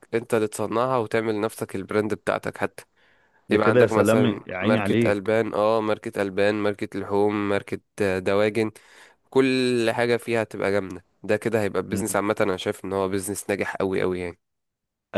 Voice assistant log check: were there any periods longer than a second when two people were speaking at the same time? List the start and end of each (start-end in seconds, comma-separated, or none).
3.5-5.3